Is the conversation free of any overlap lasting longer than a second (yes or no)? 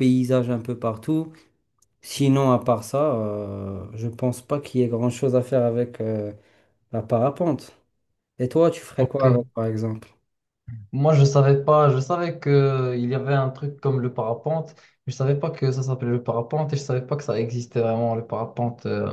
yes